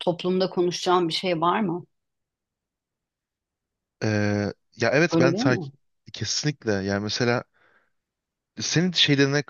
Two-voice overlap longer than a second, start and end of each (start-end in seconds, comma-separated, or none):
none